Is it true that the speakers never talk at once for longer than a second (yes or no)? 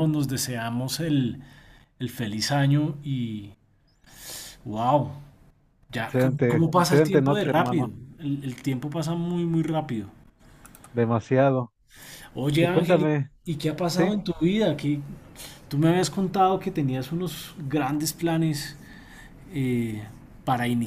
no